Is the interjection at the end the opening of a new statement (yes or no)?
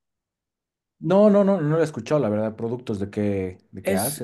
yes